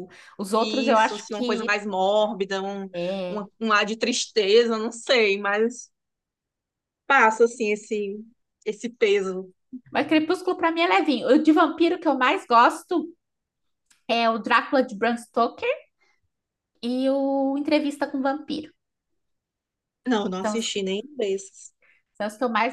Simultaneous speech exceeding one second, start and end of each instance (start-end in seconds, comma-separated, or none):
0.6-1.8